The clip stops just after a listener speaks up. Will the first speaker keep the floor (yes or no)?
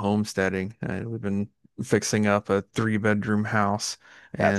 yes